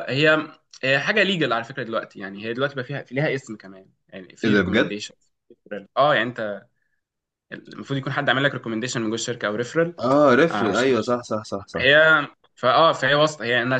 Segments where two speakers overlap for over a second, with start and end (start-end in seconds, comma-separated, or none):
none